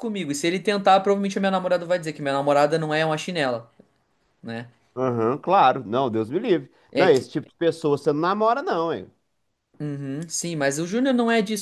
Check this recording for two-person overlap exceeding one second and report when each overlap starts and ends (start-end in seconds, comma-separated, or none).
none